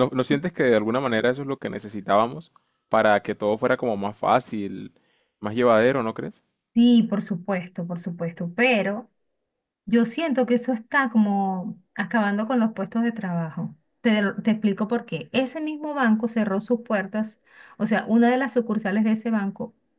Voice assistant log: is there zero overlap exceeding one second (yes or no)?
yes